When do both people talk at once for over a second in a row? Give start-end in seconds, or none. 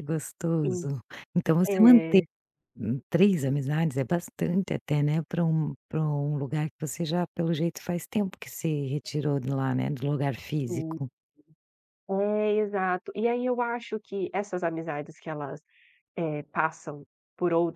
none